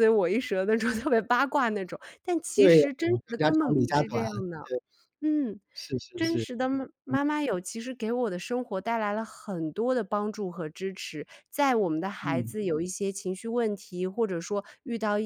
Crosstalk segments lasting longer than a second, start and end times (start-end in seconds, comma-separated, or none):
2.6-4.2